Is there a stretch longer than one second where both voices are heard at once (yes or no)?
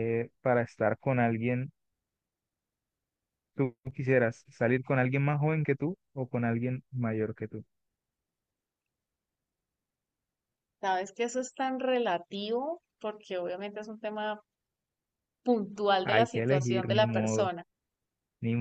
yes